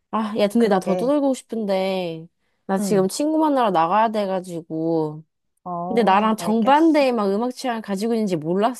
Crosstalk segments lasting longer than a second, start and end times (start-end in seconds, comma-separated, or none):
5.9-7.1